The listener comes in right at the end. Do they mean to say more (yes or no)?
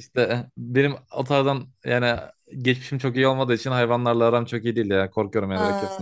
yes